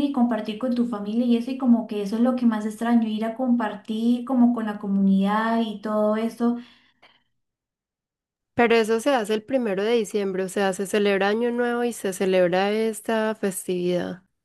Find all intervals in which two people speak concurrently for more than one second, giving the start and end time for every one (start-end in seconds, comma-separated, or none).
none